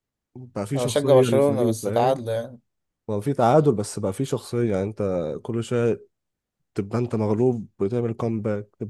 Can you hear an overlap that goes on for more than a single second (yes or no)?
yes